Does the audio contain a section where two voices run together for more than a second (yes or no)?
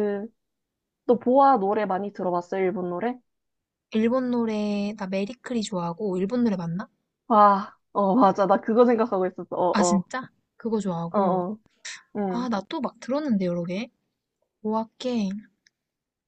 no